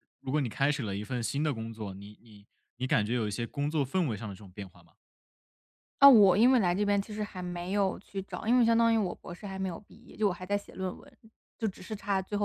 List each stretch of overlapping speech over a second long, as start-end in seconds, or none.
none